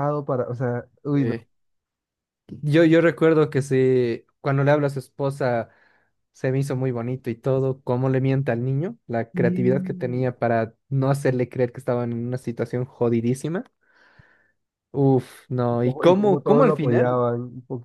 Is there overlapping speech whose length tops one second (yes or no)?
yes